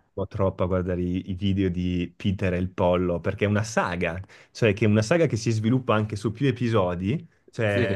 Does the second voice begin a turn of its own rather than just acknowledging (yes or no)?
no